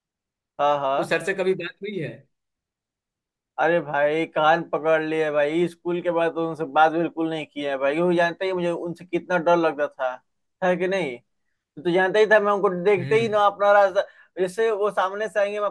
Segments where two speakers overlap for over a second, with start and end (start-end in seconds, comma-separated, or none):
none